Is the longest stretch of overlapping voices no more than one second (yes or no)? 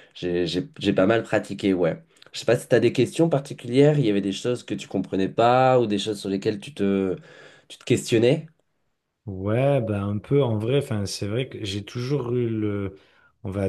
yes